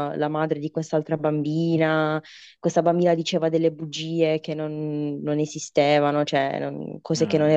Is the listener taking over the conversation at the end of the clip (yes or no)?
no